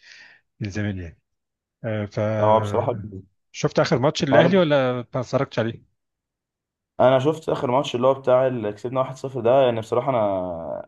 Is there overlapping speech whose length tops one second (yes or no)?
no